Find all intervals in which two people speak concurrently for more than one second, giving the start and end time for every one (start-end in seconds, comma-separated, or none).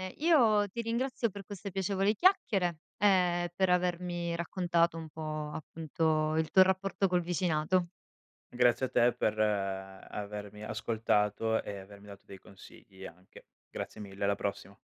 none